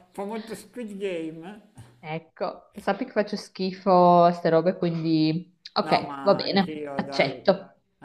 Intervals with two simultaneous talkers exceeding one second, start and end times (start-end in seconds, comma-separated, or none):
5.8-7.4